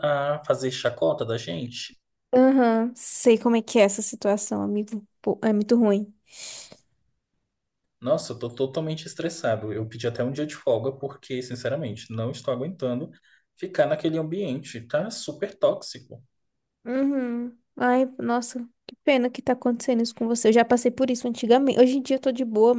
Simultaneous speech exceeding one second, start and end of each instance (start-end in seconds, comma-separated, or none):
none